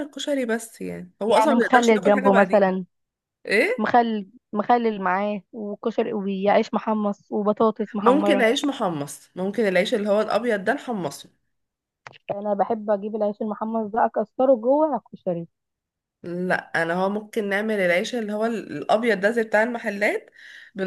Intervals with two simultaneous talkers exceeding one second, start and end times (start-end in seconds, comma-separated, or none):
1.3-2.7